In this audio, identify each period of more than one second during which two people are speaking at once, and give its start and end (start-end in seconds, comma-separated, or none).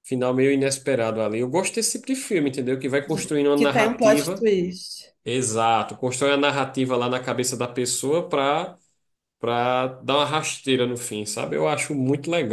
3.0-4.5